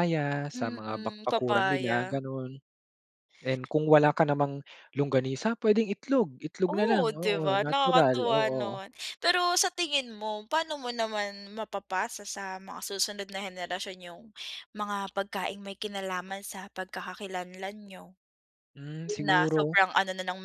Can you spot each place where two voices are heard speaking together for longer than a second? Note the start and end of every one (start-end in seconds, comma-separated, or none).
0.6-2.2, 6.7-8.8